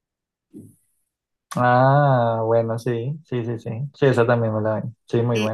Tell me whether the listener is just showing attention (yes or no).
no